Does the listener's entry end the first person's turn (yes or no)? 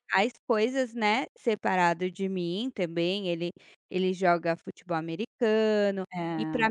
no